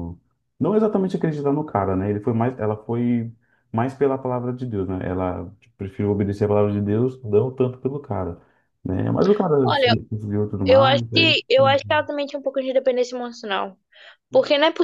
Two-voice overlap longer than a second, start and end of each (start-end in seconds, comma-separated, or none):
10.7-12.0